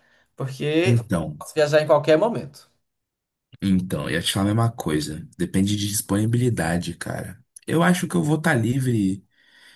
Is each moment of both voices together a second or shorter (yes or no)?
yes